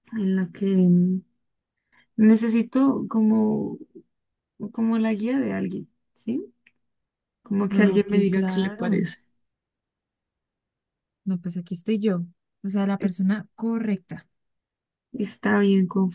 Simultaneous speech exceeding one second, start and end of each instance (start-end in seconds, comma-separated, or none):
7.7-9.0